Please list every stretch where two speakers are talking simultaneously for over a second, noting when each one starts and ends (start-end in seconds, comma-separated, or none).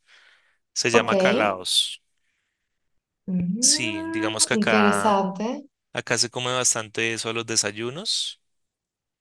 3.6-5.2